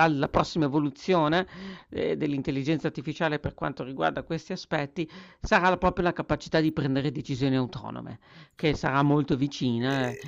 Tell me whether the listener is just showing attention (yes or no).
yes